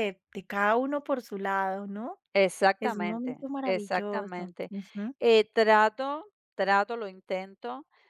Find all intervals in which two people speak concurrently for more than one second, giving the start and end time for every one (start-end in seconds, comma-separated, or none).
2.8-4.7